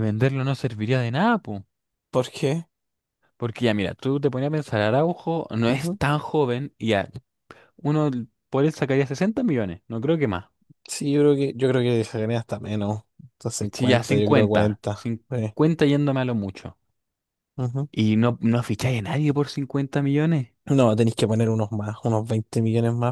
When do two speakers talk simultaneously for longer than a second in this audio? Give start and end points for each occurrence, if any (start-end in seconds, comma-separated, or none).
13.7-15.5